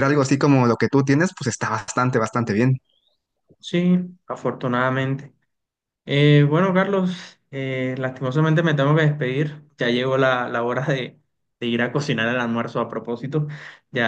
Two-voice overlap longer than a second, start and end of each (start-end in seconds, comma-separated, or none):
none